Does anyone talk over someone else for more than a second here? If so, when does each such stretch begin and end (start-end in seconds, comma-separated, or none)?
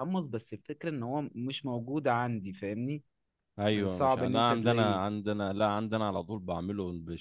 3.7-5.0